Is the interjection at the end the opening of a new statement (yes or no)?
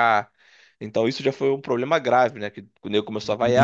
yes